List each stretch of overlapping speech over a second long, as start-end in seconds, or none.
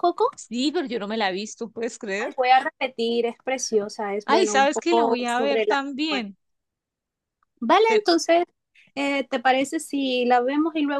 4.3-6.3